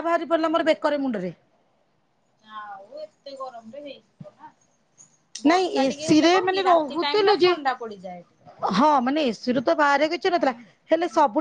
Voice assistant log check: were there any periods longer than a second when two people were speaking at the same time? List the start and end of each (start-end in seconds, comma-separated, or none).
5.5-7.5